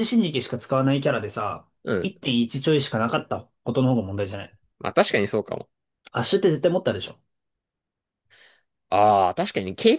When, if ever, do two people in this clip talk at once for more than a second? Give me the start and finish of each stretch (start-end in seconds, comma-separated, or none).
none